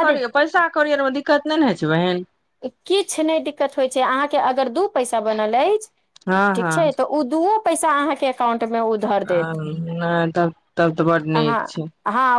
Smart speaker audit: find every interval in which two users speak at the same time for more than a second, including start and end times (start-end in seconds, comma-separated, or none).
none